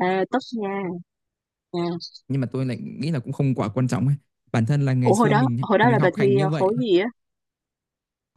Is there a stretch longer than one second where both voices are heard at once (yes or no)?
yes